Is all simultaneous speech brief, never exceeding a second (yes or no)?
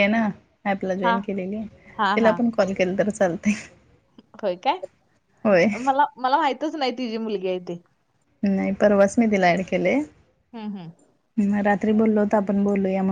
yes